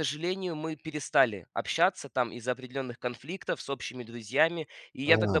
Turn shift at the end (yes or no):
no